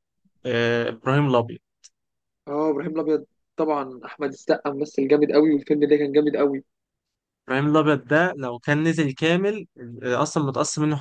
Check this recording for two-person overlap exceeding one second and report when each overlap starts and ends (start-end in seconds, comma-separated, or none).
none